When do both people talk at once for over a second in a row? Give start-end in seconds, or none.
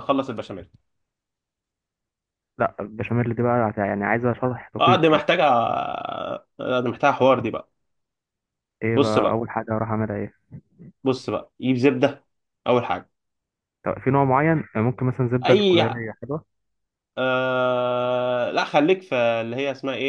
none